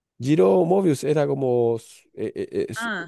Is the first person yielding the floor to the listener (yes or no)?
yes